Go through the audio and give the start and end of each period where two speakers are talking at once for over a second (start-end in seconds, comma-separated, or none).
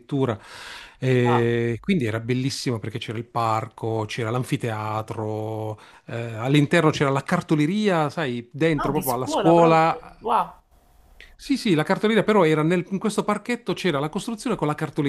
8.8-10.2